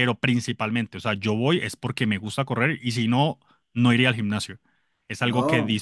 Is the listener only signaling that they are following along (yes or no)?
yes